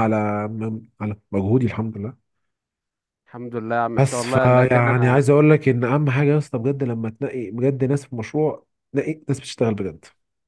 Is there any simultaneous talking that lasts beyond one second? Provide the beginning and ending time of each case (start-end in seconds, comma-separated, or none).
4.0-5.3